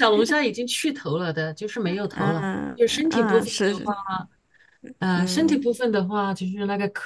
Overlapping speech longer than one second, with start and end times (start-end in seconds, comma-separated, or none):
2.1-3.9